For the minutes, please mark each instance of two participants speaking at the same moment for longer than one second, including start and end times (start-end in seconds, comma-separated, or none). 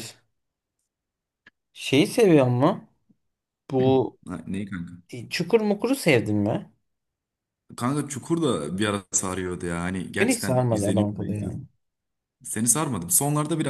10.2-11.6